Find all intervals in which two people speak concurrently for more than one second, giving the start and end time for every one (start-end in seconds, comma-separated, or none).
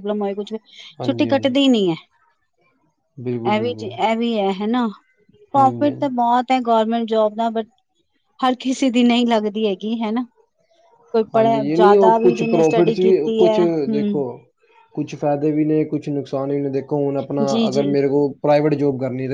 11.3-14.2